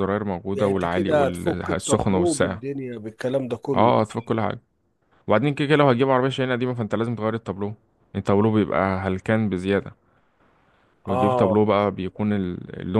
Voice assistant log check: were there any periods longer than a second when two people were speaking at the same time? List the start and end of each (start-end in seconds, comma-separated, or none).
0.5-2.6